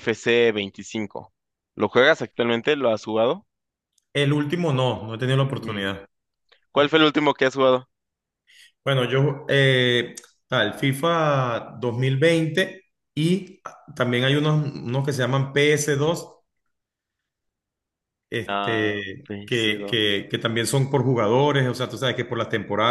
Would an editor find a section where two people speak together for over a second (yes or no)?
yes